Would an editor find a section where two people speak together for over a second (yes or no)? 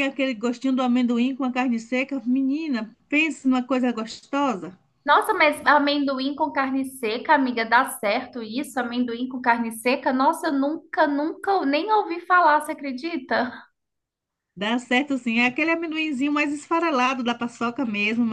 no